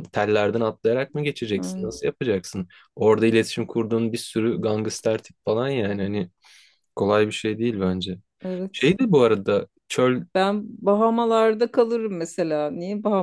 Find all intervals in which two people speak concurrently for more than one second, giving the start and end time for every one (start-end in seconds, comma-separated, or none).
none